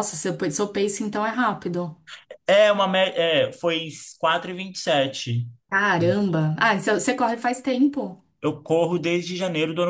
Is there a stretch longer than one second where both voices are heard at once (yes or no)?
no